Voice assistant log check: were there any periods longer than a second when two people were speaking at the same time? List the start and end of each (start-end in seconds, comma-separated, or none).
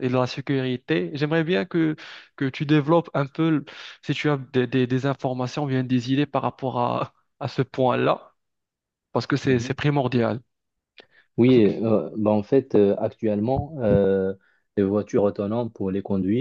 none